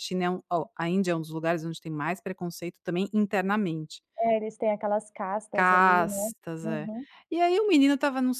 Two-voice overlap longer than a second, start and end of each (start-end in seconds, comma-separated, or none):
5.5-6.9